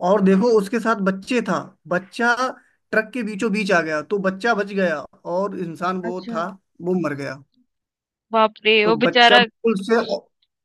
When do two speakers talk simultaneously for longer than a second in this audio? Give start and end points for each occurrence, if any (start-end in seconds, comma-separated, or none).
none